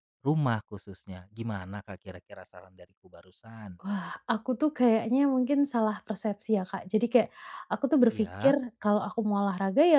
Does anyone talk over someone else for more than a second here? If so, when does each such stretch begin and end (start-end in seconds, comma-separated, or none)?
none